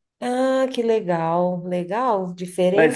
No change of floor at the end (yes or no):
no